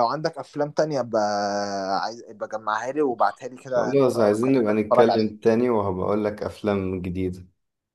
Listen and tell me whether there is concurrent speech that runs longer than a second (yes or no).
yes